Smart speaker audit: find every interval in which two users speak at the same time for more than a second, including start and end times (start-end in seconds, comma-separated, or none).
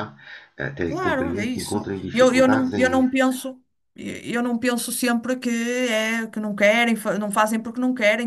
0.9-3.0